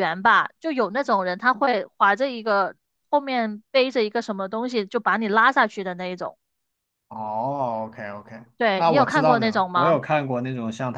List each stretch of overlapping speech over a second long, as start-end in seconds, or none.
8.6-10.0